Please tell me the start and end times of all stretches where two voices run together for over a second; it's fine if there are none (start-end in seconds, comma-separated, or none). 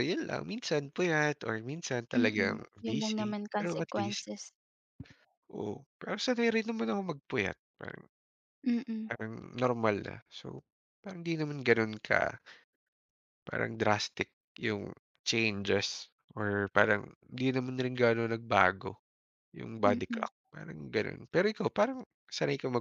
2.2-4.3